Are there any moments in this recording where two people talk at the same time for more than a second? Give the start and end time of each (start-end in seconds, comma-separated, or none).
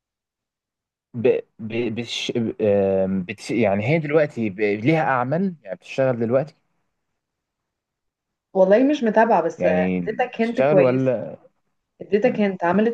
9.6-11.2